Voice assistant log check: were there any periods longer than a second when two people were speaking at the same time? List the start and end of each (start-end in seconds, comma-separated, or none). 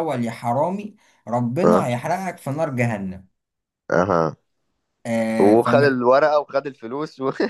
none